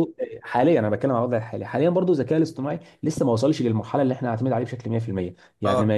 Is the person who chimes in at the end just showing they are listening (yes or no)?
yes